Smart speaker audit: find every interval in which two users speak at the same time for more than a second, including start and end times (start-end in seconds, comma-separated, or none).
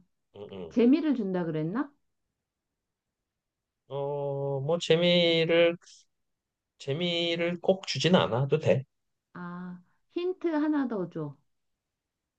none